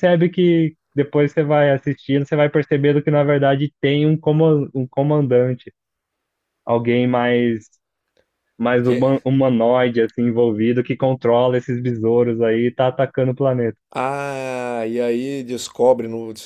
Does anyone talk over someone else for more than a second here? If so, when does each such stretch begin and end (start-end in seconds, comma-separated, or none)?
none